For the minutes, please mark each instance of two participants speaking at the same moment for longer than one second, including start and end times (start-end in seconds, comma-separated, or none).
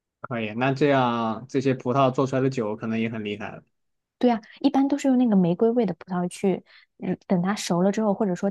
none